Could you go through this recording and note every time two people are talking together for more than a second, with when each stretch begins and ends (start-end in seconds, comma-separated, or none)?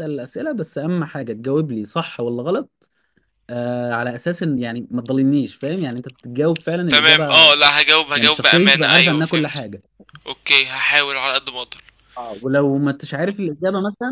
8.2-9.6